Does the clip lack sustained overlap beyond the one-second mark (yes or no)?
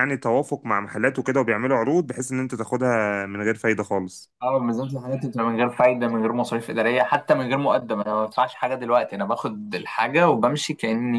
yes